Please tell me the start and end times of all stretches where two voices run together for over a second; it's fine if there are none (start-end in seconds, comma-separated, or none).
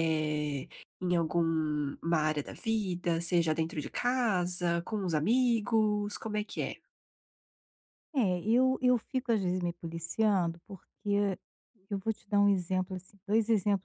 none